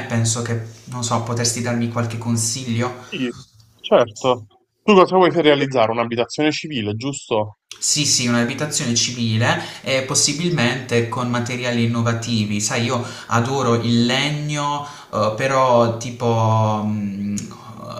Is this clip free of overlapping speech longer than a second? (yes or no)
yes